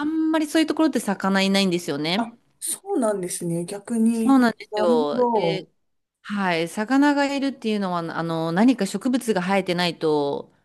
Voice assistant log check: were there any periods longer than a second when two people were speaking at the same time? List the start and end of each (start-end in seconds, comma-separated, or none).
4.1-5.7